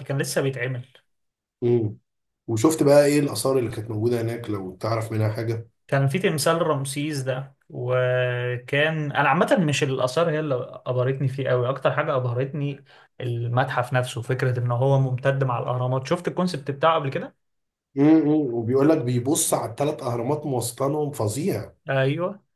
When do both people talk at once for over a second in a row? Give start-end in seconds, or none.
none